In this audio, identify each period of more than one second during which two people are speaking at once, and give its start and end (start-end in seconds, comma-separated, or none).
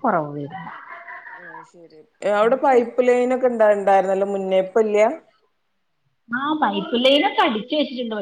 none